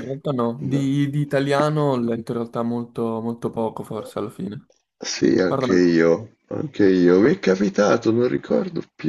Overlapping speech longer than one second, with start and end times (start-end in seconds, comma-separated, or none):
none